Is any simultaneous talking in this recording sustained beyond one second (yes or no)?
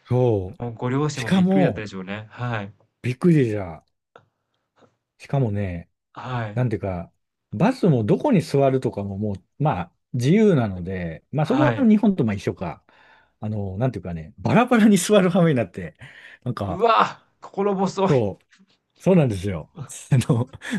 yes